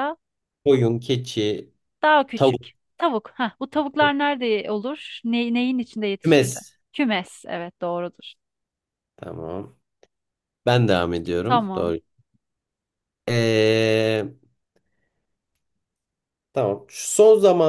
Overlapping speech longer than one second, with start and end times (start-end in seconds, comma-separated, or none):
none